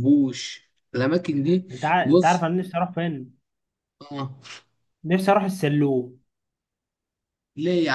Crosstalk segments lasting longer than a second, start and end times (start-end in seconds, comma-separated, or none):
none